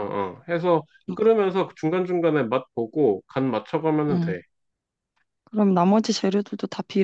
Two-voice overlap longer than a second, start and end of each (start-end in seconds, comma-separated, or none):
none